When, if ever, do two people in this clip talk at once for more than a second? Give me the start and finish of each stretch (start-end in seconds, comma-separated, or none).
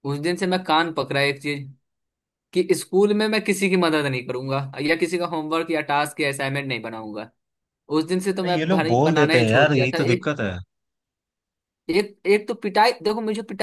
8.4-10.3